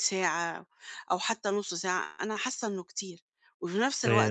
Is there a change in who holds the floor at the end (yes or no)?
no